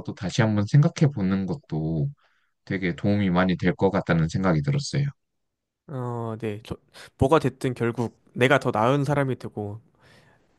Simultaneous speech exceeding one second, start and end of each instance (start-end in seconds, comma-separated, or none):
none